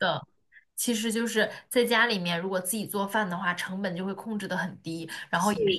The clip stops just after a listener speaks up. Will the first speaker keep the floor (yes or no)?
yes